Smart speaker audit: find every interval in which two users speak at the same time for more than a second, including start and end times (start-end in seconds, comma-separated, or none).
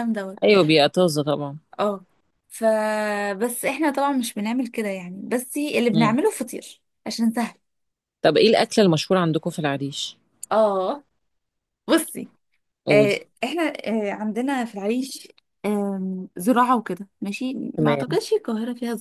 none